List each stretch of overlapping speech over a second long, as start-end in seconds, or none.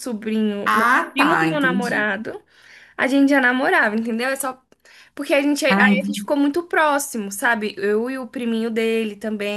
0.7-2.1